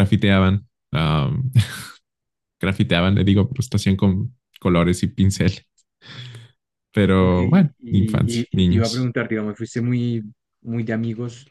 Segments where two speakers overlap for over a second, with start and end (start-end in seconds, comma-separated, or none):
7.2-9.1